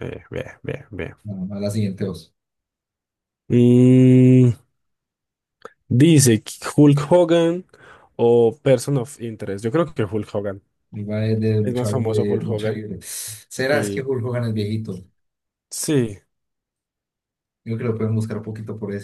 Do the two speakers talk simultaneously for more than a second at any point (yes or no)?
yes